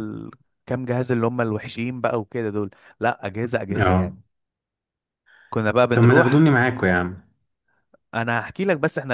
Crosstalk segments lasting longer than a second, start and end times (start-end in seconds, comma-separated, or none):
none